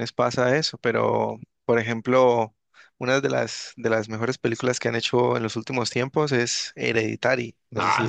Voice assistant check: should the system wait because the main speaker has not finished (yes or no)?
no